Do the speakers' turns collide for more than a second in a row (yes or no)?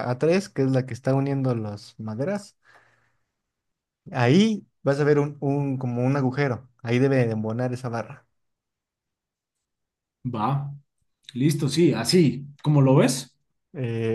no